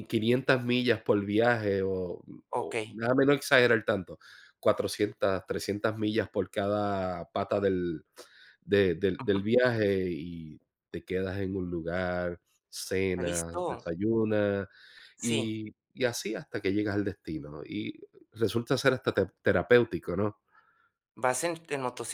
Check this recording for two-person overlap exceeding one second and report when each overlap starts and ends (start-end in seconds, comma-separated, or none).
none